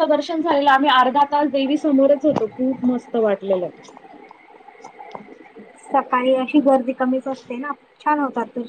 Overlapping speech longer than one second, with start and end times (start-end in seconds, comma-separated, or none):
none